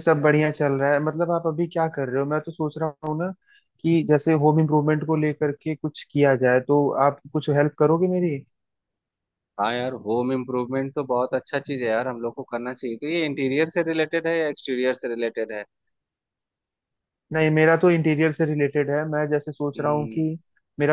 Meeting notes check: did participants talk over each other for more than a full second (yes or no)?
no